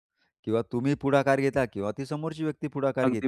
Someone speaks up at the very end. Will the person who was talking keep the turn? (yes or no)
no